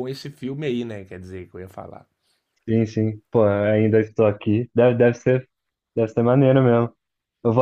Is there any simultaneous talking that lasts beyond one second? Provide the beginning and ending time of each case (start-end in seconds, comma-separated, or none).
none